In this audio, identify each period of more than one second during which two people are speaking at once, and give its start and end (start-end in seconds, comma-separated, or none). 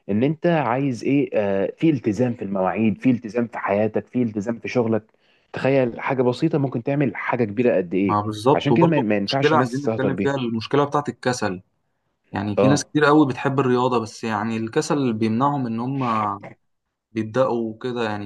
8.1-10.3